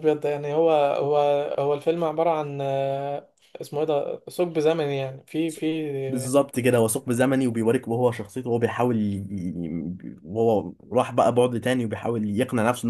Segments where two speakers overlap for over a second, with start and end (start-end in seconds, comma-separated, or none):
none